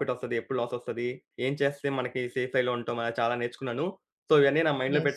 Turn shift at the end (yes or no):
no